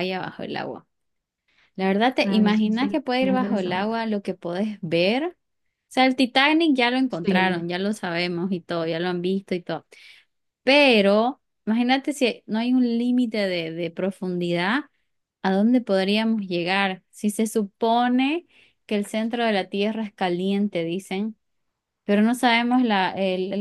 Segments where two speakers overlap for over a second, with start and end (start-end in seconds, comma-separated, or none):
2.2-4.0